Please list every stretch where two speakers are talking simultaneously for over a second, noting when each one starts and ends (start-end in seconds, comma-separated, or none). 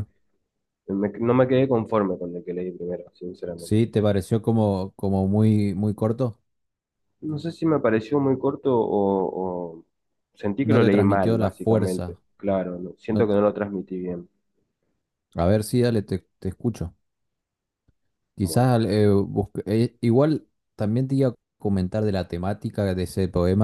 10.6-12.2